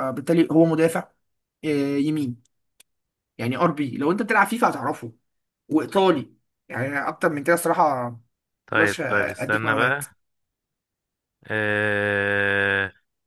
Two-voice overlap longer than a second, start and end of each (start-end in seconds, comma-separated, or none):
8.7-10.0